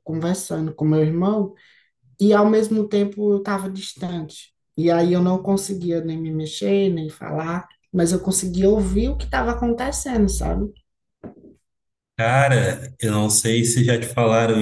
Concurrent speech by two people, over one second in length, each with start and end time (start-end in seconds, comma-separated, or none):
none